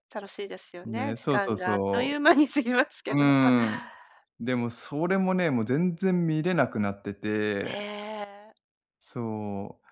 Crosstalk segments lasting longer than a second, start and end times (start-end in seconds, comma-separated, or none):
0.8-2.2